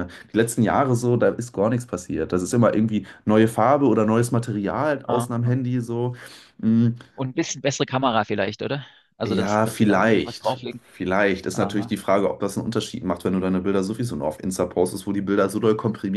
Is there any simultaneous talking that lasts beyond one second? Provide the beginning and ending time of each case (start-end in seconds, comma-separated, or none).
9.3-10.8